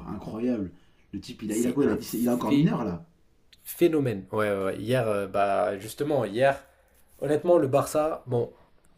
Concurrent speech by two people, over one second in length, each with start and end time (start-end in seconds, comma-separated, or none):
1.5-2.7